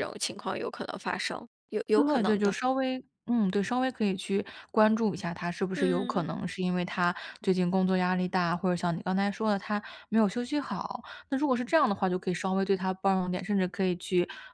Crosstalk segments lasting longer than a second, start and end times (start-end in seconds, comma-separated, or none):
none